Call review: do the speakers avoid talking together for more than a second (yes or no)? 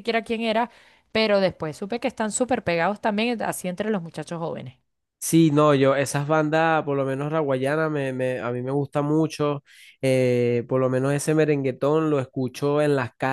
yes